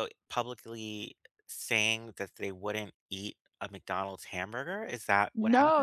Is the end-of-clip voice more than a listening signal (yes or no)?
yes